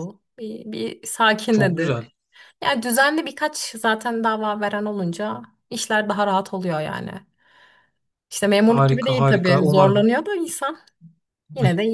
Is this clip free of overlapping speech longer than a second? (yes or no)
no